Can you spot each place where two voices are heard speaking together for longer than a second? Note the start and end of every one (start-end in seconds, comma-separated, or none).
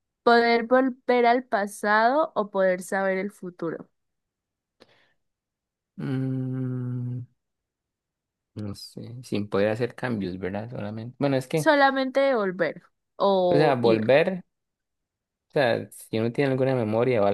none